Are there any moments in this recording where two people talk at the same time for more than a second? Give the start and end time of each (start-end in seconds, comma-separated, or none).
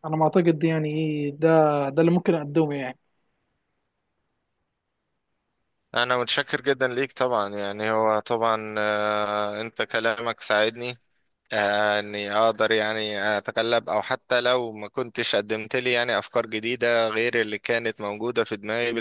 none